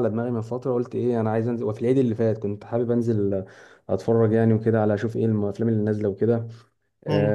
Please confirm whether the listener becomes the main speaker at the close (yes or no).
no